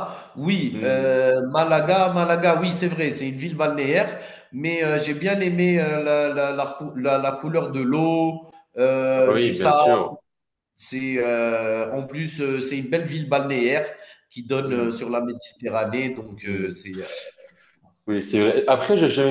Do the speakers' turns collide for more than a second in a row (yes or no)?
no